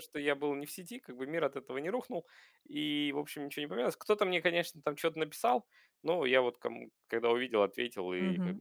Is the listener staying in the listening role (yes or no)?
no